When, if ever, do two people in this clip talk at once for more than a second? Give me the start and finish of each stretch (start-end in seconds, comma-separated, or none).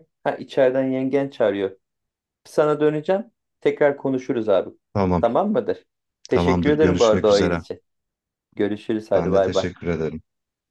6.3-7.6